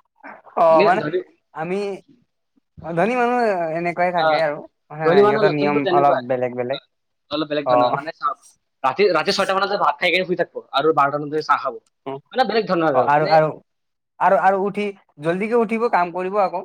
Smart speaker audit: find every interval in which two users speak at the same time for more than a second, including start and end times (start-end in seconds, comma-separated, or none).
5.0-6.7